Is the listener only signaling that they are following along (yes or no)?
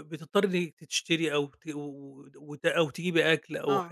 yes